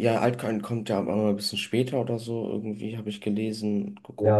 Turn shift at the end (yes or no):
yes